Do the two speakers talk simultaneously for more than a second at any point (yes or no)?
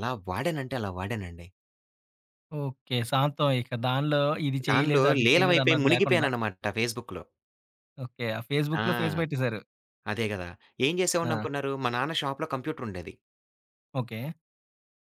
yes